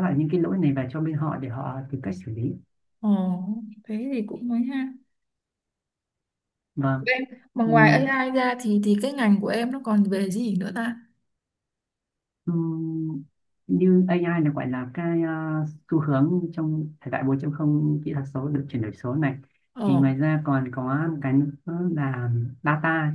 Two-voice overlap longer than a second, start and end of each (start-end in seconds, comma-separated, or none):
none